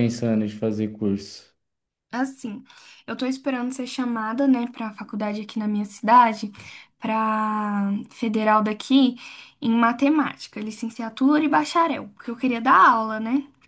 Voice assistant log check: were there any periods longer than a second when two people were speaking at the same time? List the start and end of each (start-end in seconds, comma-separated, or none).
none